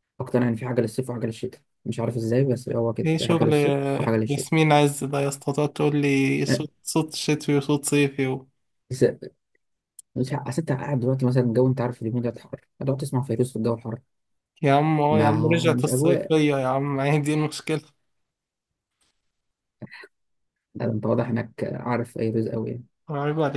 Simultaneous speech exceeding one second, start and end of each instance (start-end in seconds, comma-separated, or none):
15.1-16.3